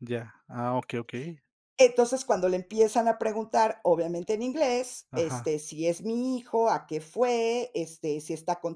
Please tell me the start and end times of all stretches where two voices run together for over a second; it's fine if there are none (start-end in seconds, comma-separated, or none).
none